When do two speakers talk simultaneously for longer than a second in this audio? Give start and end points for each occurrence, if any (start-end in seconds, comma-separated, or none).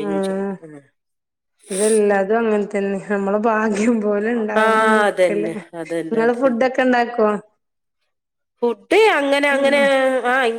4.6-6.7